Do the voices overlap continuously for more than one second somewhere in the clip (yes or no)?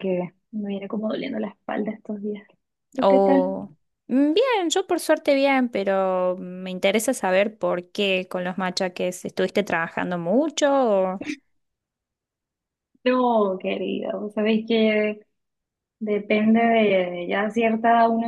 no